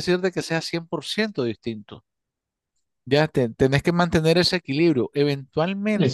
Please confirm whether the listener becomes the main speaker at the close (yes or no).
yes